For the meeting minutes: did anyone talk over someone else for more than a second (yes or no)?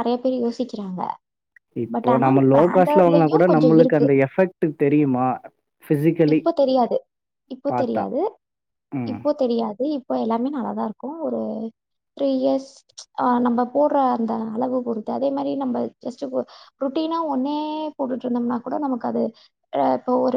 yes